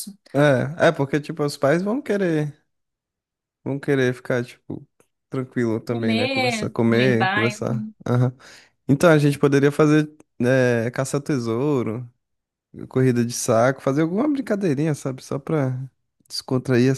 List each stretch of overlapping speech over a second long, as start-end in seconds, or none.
5.9-7.6